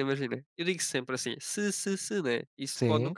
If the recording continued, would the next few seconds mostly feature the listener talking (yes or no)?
no